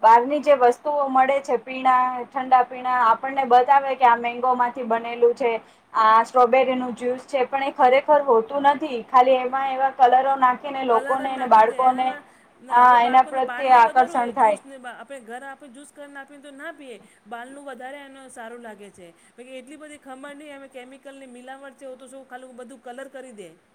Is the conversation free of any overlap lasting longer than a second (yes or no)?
no